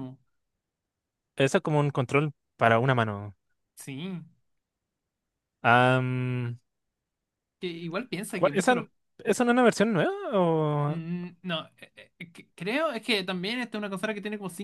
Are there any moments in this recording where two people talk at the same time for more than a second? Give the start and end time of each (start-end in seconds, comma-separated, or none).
none